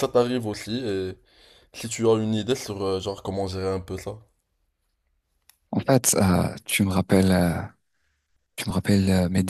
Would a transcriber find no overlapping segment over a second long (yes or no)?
yes